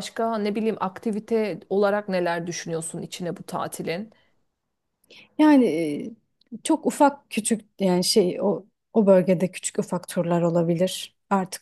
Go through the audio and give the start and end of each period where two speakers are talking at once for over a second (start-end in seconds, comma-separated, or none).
none